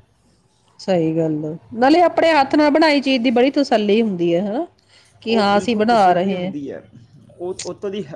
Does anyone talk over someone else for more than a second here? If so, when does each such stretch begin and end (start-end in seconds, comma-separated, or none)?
5.3-6.5